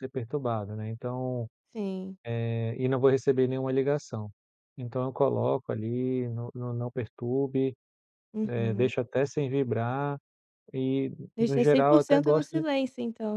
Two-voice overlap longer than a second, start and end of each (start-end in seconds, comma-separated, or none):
11.3-12.6